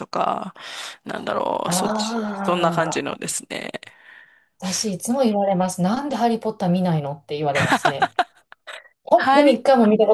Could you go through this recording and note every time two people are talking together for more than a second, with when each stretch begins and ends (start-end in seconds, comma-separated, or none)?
1.6-3.2